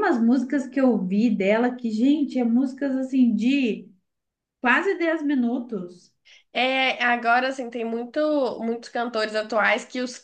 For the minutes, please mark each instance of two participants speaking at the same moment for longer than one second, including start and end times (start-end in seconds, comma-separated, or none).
none